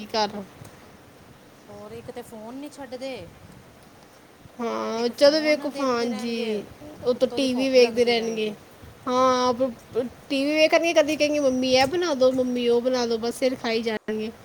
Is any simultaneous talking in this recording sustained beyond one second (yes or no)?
yes